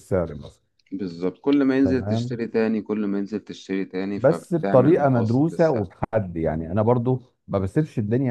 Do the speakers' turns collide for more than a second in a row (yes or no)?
yes